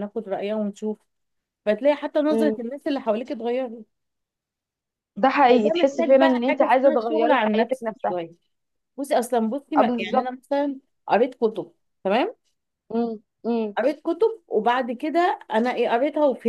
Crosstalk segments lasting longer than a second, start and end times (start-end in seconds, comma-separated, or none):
5.5-8.1